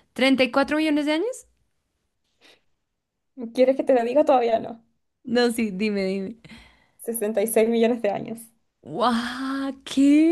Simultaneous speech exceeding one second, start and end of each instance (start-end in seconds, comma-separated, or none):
none